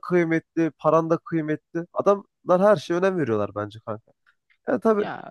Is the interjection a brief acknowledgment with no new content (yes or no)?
yes